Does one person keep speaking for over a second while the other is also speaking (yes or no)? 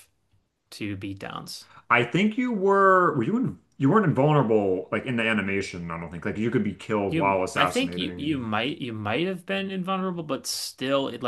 yes